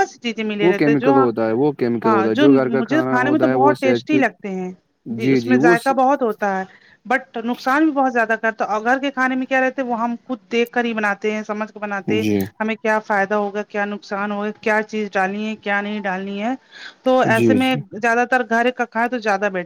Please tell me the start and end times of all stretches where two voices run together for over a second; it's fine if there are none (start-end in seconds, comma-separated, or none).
2.0-4.2